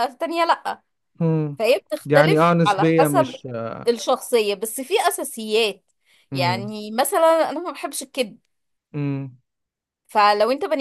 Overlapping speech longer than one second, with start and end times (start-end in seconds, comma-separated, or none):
2.1-3.4